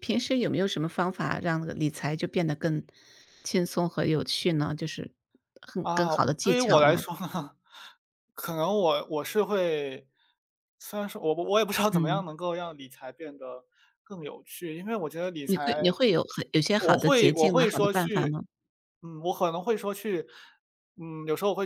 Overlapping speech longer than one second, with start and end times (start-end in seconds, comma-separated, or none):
5.8-7.0, 16.8-18.4